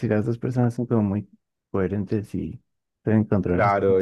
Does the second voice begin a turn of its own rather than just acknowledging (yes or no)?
yes